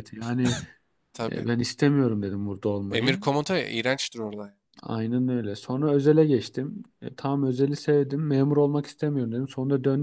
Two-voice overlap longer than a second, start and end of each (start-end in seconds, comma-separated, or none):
none